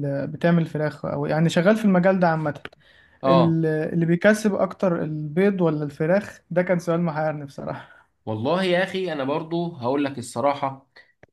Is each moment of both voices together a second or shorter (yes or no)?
yes